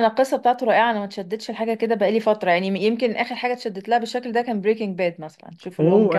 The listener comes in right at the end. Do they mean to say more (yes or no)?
yes